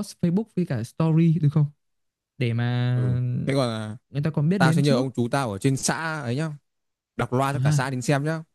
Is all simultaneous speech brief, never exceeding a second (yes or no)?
yes